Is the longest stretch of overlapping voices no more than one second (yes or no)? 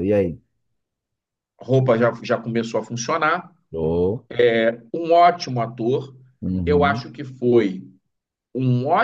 yes